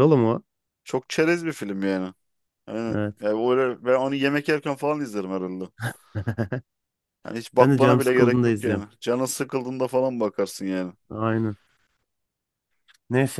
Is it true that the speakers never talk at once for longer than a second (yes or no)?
no